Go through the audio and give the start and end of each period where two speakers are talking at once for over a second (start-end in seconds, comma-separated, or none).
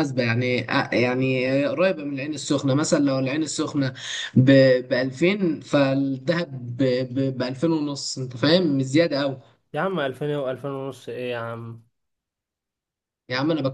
none